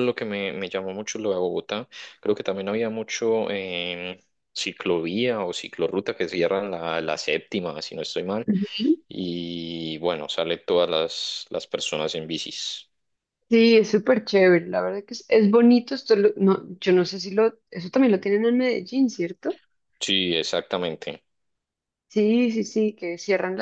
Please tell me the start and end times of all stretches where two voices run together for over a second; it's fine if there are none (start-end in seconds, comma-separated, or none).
none